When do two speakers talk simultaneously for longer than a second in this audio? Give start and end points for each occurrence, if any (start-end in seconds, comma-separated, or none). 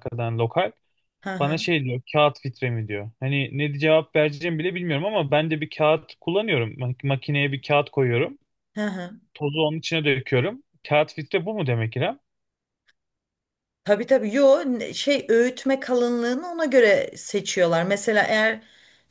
none